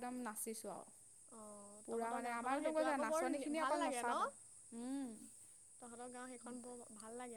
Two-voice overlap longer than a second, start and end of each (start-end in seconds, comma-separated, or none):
1.9-4.1